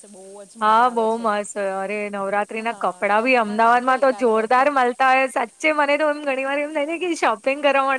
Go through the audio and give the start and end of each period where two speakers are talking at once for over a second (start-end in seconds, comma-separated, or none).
2.7-4.8